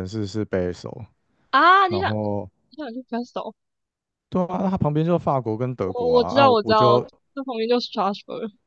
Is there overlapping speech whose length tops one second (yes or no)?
yes